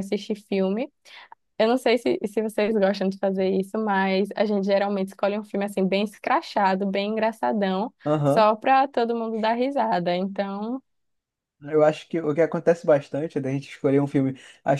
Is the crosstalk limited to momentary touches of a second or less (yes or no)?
yes